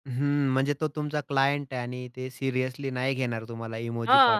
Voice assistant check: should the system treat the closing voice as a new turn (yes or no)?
yes